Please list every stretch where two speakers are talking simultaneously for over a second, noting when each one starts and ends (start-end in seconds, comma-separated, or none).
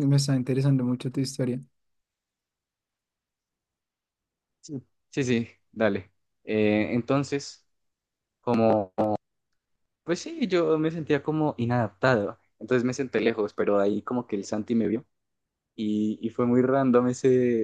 none